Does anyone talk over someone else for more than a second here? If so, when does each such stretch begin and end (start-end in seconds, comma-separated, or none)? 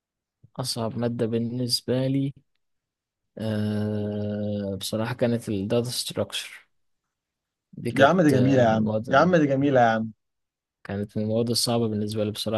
7.9-9.3